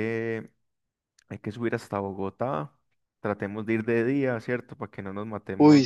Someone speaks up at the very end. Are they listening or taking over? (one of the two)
taking over